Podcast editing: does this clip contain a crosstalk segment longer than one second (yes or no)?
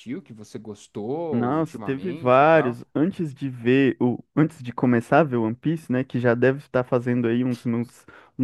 yes